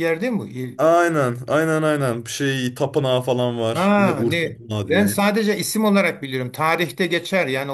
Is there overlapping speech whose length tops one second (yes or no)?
yes